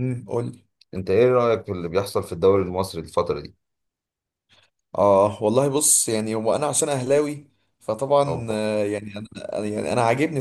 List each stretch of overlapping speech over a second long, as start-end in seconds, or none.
none